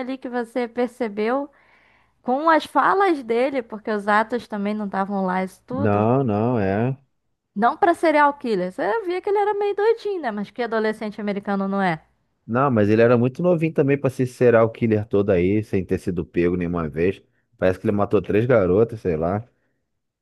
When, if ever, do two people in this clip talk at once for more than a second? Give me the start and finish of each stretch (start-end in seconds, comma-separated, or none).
none